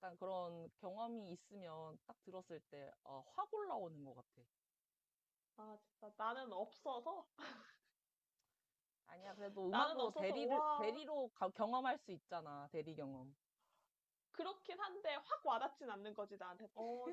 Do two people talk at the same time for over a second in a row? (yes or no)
yes